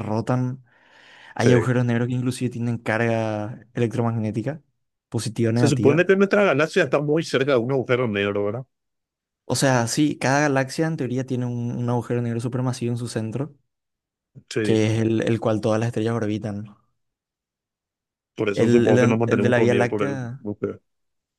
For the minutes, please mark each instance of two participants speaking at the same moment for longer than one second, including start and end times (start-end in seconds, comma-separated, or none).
18.5-20.2